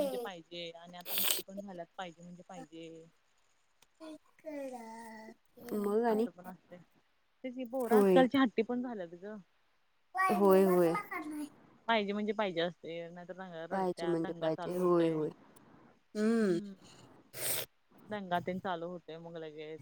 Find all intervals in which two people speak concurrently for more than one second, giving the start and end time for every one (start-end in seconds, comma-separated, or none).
13.7-15.2